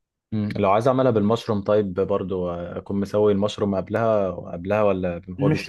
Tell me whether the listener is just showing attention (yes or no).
no